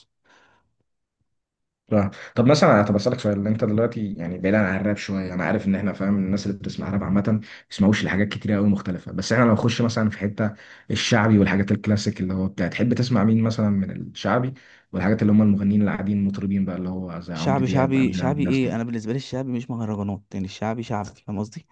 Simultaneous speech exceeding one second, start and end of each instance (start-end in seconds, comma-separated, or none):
17.3-18.9